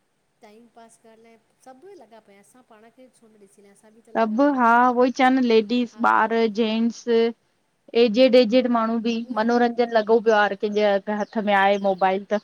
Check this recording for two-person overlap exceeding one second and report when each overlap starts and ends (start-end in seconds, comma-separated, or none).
none